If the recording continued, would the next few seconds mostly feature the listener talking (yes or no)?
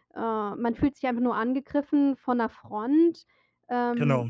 no